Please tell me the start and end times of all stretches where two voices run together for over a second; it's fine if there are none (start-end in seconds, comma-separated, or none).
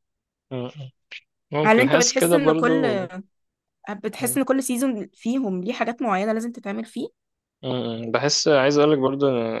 1.6-3.1